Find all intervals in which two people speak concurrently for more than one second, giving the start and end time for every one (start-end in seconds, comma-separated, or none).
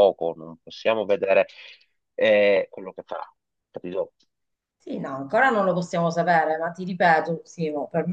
none